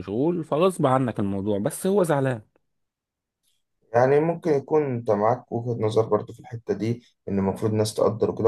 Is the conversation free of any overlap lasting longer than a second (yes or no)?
yes